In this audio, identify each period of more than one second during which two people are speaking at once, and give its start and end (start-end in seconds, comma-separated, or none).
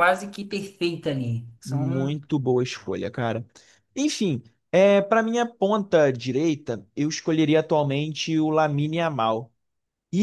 none